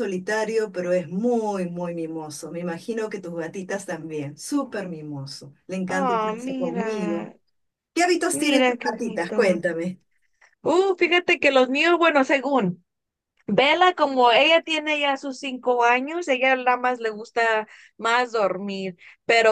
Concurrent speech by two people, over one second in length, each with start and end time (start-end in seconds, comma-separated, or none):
5.9-7.3, 8.3-9.6